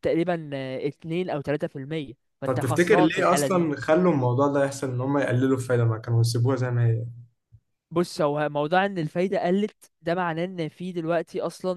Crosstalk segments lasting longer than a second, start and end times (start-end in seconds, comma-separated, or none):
2.4-3.7